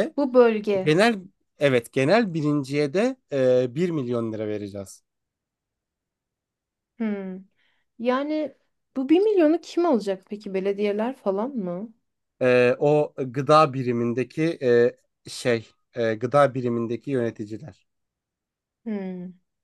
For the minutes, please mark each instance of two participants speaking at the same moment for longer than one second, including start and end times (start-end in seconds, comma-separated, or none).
none